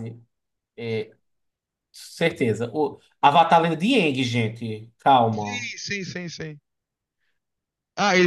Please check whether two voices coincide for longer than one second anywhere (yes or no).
no